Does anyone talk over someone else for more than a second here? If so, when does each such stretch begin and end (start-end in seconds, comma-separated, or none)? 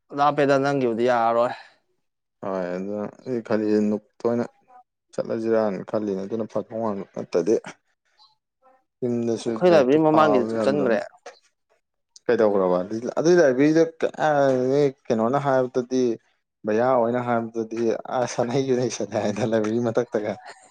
9.5-11.0